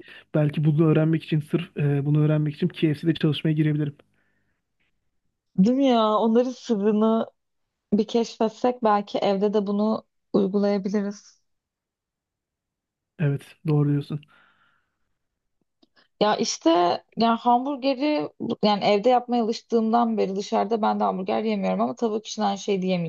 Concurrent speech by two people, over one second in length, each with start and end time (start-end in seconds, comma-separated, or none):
none